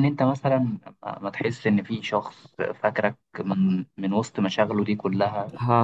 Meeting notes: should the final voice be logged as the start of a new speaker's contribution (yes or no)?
no